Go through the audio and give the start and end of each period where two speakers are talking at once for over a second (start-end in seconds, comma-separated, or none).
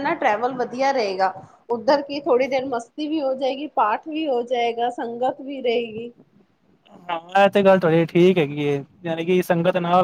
none